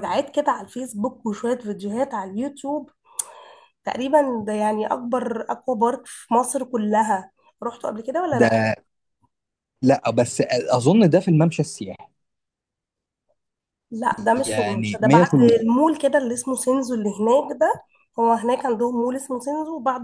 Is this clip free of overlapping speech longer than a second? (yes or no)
no